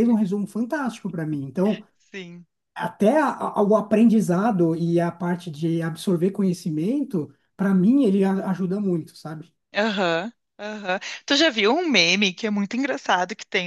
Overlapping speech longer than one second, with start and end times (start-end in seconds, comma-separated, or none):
none